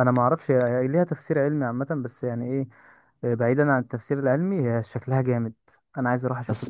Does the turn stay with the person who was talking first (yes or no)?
no